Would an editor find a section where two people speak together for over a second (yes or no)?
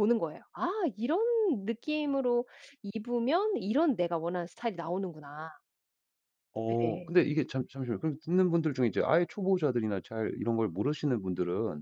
no